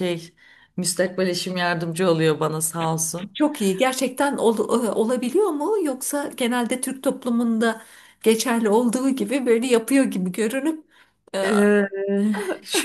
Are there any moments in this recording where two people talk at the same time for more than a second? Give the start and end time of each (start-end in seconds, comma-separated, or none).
none